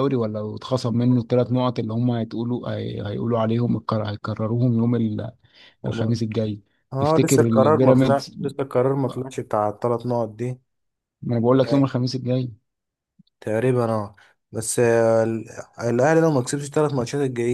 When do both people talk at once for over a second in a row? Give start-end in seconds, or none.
7.0-8.4